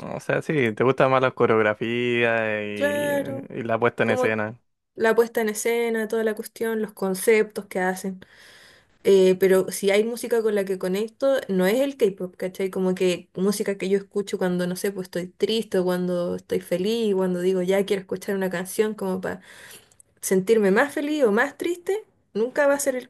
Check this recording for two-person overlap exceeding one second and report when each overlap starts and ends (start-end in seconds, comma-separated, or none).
none